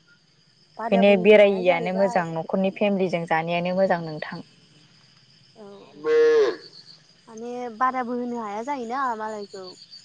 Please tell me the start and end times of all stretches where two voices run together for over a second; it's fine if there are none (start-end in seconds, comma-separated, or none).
0.8-2.2